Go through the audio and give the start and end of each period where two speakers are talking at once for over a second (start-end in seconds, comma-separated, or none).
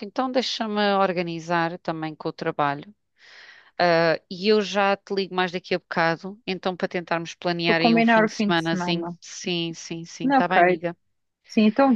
7.7-9.1